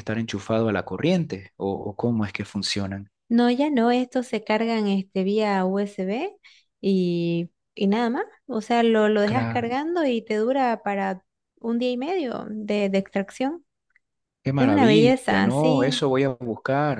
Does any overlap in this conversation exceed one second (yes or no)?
yes